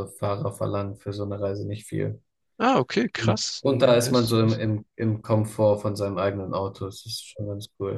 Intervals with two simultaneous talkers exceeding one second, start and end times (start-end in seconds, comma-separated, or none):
3.1-4.6